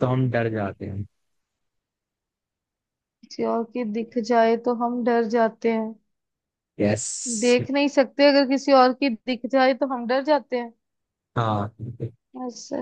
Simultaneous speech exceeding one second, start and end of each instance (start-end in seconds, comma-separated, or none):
none